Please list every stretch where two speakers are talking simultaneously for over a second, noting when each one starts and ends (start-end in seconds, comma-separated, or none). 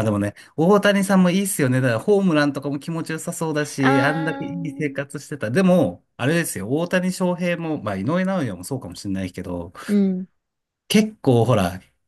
3.8-5.0